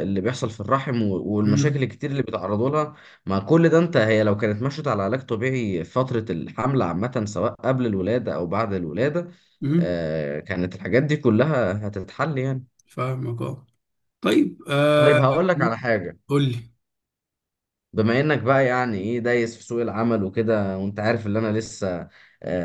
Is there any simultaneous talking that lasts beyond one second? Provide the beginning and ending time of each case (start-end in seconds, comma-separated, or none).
none